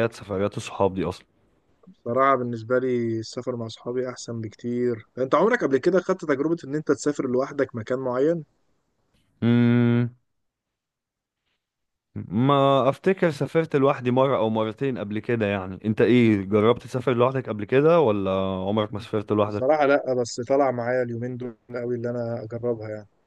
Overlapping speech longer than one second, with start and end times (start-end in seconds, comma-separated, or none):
none